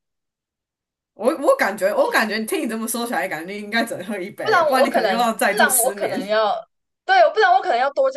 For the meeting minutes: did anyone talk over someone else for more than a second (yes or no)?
yes